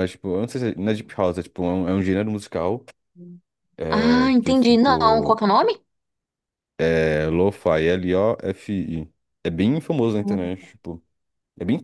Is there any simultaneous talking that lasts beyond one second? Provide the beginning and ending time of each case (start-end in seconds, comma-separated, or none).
3.9-5.4